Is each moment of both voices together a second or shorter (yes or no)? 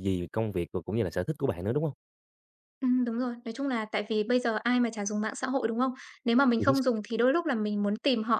yes